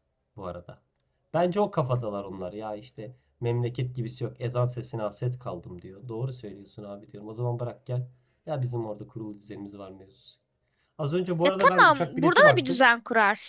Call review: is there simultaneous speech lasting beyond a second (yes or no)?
yes